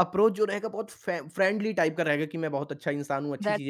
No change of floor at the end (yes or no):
yes